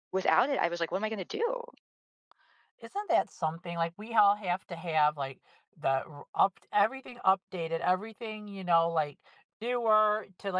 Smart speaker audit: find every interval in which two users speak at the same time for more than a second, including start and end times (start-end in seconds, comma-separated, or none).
none